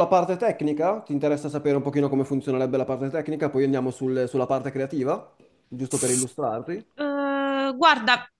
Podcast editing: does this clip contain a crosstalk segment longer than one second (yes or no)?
no